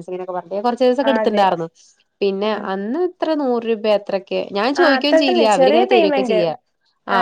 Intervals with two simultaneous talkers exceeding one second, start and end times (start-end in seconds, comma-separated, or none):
4.8-6.4